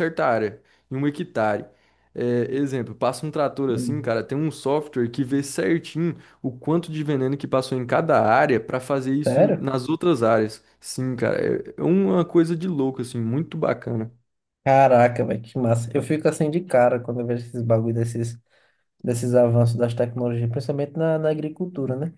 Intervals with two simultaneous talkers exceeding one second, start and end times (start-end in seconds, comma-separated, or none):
none